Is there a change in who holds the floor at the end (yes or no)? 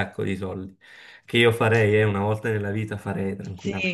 yes